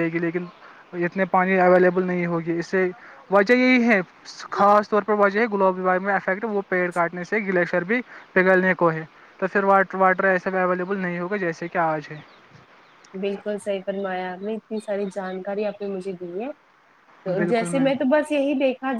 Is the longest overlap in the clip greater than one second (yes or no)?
no